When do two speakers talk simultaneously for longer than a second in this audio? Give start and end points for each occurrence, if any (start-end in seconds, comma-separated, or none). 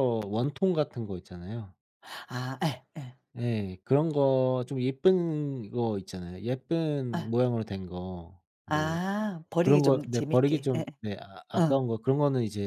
9.6-10.8